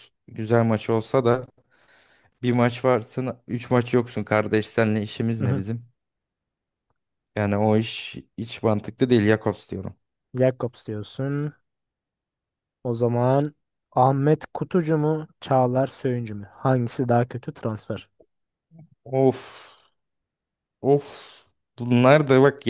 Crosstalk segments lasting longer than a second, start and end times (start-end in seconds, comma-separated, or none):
none